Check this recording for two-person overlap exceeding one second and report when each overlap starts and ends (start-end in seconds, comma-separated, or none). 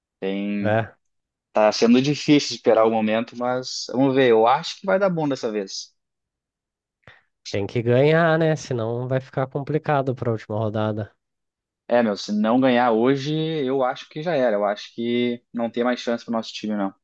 none